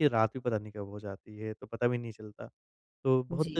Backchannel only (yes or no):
yes